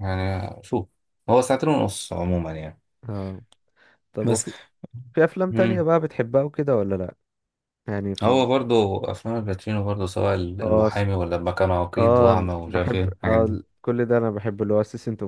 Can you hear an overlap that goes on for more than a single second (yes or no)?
yes